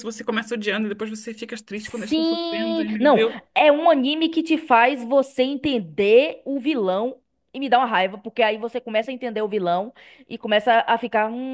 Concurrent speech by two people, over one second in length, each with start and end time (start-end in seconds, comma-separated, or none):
1.8-3.4